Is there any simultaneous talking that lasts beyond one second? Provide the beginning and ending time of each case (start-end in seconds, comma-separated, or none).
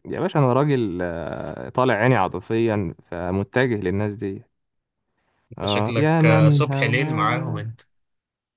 5.6-7.6